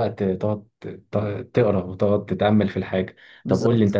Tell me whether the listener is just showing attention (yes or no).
yes